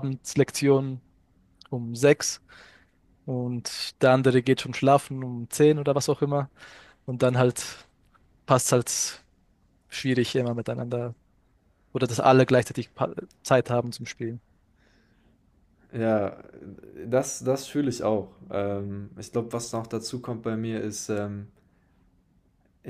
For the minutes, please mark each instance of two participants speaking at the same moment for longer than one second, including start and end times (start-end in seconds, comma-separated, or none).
none